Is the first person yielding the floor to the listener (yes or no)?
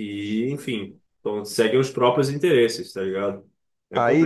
yes